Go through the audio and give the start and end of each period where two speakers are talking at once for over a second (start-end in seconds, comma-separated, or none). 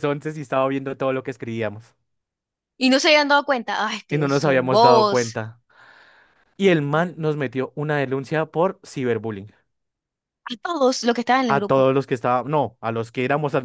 4.1-5.4